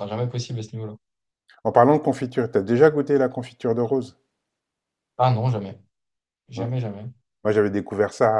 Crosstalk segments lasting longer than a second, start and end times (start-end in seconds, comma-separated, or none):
none